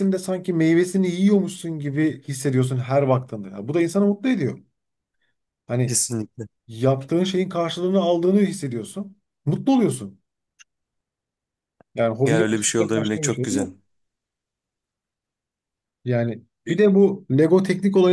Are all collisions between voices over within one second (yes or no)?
no